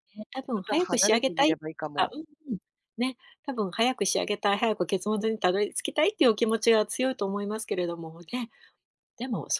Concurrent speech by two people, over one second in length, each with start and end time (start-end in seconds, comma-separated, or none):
0.6-2.1